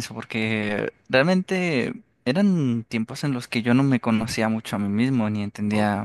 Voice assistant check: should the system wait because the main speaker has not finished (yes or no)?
yes